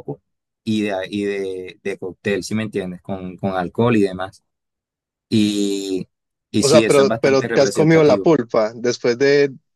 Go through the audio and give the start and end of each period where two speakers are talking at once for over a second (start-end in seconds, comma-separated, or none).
6.6-8.3